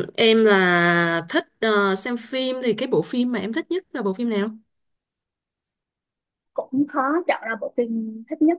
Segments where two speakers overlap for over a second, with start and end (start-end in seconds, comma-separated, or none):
none